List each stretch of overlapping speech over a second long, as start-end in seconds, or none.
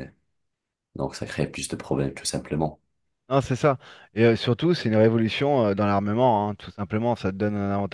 none